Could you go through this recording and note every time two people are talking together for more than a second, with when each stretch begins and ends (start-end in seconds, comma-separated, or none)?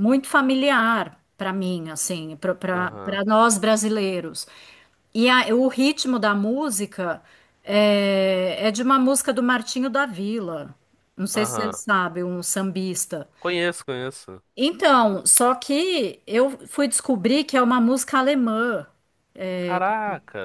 none